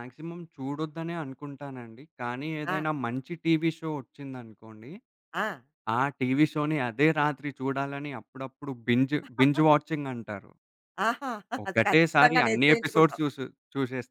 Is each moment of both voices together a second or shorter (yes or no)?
no